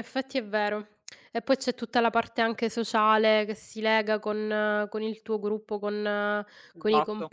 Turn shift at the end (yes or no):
yes